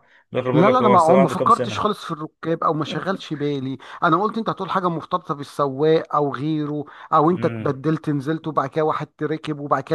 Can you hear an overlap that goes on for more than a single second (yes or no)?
yes